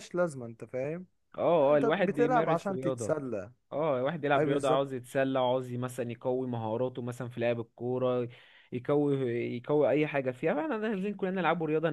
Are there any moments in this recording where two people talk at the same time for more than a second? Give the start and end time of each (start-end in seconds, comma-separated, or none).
1.6-3.1